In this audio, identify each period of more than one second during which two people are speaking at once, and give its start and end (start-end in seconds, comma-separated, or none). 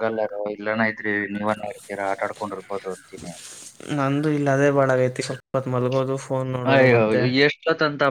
none